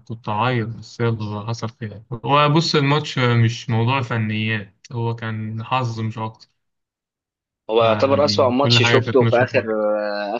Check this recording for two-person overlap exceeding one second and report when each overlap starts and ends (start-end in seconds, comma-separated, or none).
7.8-9.7